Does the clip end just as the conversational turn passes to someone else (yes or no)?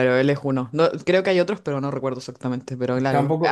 yes